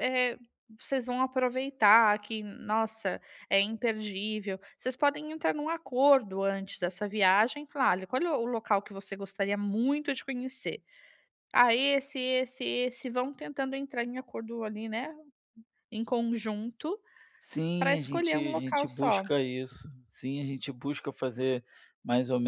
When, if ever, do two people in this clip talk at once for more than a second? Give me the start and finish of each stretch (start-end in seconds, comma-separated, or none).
17.8-19.2